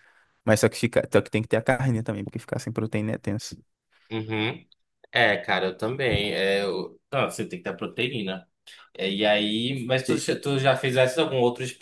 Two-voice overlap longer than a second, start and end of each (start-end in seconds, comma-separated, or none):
none